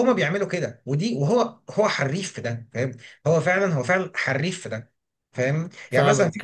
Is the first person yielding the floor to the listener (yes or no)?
yes